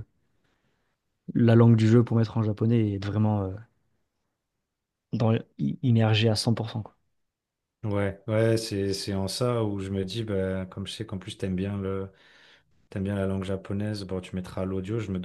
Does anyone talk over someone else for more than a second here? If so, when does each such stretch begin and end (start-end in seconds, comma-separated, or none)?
none